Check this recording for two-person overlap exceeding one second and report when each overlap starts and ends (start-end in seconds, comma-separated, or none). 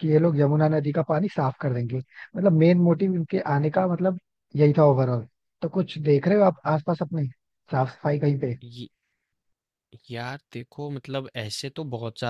none